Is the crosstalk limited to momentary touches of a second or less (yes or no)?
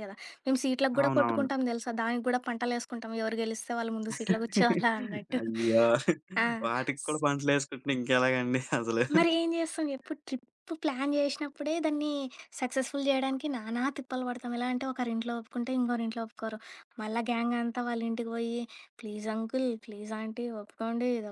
yes